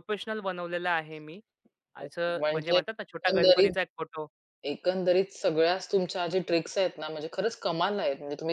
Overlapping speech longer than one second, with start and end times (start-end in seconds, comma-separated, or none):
2.0-3.8